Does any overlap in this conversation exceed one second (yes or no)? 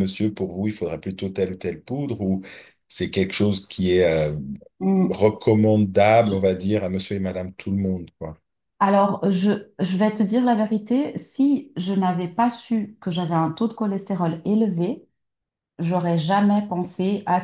no